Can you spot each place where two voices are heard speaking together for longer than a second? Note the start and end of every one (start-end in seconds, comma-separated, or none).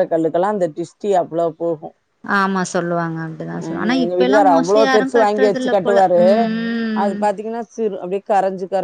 3.6-6.2